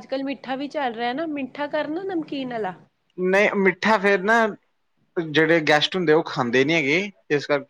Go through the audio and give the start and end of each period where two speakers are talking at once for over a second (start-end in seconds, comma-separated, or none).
none